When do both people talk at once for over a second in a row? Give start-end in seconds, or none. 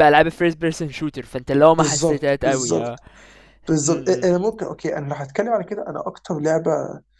1.7-3.0